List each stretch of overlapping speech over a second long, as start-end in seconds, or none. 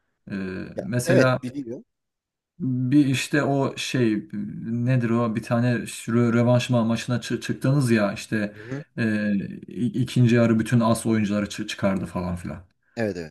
none